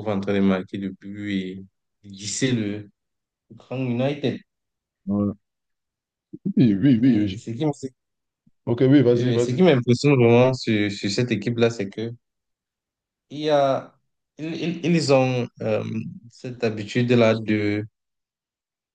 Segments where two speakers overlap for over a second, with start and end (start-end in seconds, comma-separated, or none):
none